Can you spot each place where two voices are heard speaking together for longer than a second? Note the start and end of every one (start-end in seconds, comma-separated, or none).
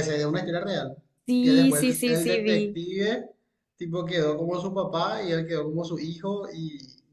1.4-2.8